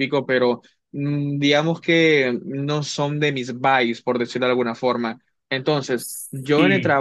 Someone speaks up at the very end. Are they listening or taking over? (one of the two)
listening